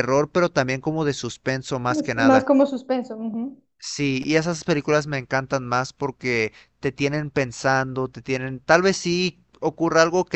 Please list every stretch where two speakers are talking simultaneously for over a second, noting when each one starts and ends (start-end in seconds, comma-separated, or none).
none